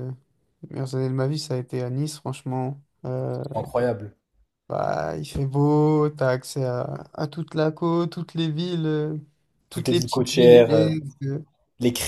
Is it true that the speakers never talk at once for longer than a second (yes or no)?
no